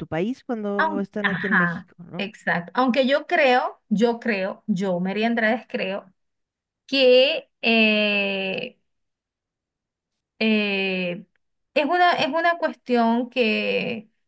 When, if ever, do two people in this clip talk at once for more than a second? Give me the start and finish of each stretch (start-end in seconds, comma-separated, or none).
0.8-2.3